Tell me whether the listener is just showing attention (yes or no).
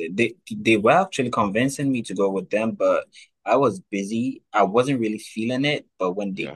yes